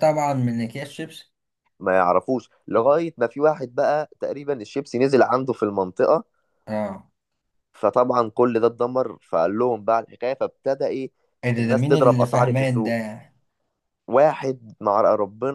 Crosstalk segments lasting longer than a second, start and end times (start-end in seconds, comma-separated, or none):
11.6-13.0